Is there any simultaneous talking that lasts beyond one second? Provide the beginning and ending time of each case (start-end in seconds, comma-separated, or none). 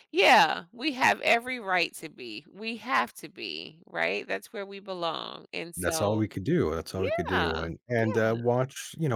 6.9-8.2